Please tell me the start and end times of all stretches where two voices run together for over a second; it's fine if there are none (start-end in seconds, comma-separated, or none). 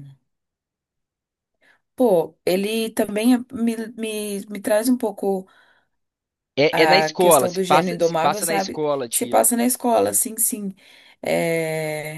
6.7-9.4